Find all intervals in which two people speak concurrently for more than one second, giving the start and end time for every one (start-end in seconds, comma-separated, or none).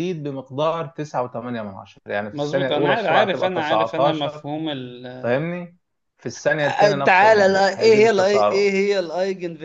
2.3-4.5, 6.6-8.7